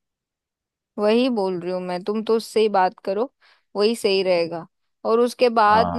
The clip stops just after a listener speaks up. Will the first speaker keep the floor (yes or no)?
yes